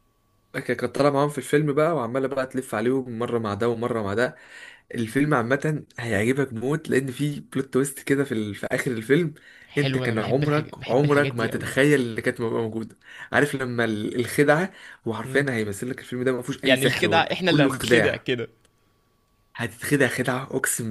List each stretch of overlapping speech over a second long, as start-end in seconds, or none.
9.8-11.8, 16.6-18.2